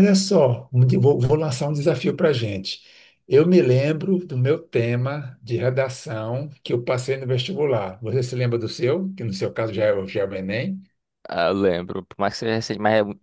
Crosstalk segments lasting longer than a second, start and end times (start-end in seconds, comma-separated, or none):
none